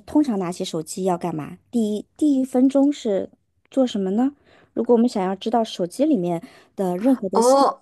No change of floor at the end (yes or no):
no